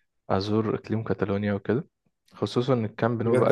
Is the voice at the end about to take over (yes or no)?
yes